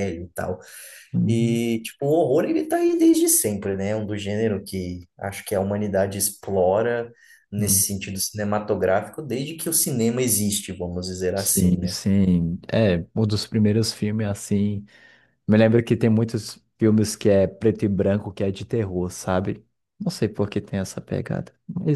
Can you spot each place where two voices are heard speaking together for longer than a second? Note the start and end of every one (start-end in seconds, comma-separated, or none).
none